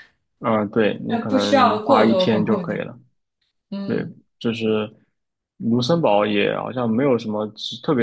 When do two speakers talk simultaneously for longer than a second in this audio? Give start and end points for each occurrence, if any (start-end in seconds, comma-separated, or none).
1.1-2.9